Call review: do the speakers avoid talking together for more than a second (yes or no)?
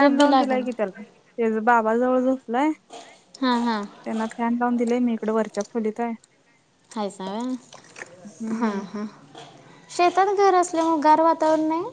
yes